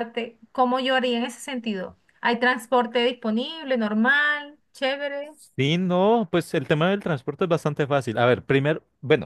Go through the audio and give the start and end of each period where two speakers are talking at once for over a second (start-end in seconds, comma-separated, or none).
none